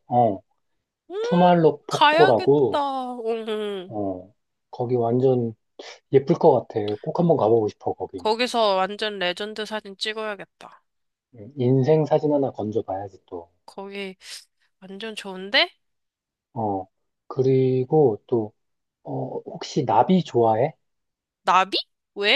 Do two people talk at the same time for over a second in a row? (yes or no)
yes